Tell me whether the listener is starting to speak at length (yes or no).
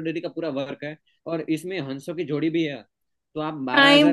no